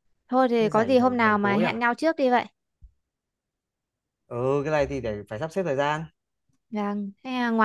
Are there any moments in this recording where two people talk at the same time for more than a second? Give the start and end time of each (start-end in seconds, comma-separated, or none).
0.6-1.8